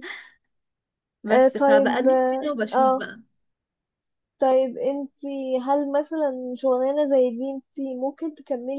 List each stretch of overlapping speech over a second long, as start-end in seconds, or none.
1.3-3.1